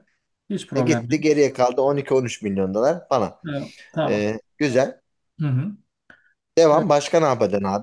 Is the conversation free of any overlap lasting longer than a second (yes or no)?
yes